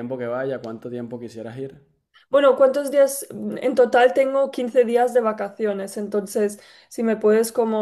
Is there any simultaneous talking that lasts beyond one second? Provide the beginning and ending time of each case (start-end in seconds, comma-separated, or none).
none